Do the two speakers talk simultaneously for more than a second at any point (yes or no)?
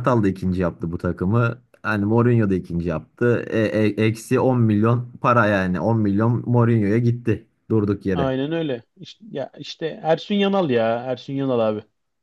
no